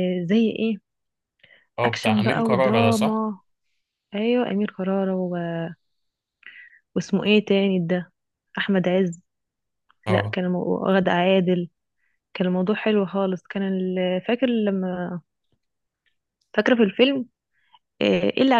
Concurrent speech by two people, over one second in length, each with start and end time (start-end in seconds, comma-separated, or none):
1.8-3.2